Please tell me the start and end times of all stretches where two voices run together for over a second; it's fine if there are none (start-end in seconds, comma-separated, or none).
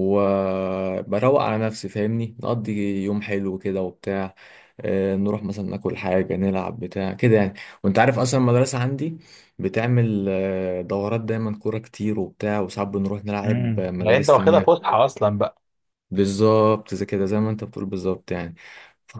13.4-14.8